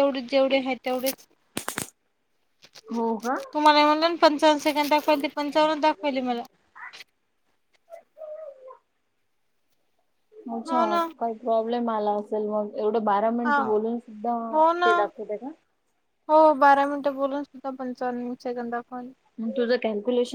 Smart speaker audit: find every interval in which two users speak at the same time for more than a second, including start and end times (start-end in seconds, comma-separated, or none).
none